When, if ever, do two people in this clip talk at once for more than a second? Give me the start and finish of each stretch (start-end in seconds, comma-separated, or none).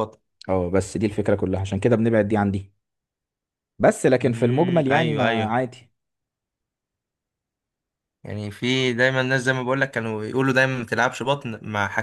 4.2-5.6